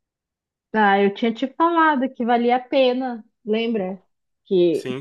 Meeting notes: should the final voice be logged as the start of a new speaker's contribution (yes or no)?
no